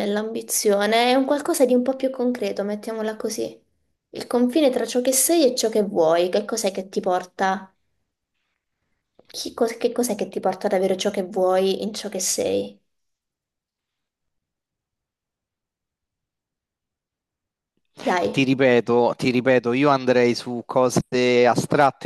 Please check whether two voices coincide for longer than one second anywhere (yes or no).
no